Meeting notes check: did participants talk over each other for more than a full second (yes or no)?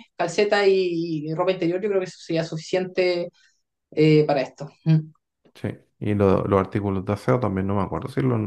no